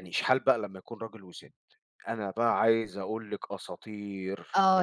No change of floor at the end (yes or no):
no